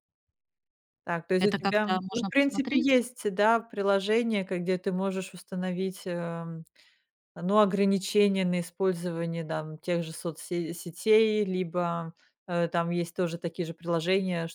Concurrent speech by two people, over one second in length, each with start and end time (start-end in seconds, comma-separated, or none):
1.4-3.0